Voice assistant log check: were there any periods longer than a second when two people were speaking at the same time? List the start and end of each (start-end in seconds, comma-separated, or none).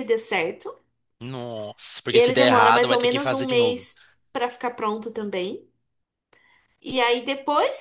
2.1-3.8